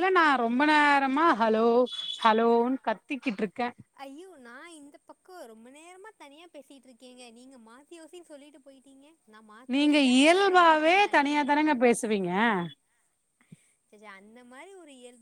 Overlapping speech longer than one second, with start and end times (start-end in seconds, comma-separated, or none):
9.7-11.4